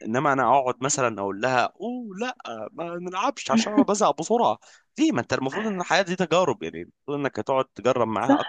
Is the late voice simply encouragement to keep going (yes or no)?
no